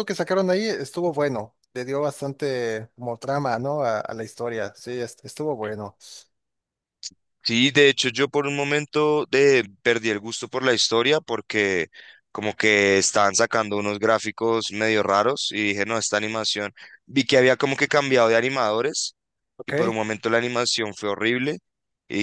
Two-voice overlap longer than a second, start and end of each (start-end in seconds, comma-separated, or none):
none